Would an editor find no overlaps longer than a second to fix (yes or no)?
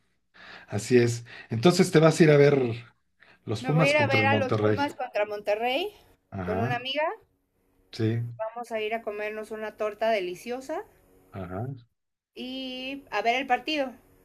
no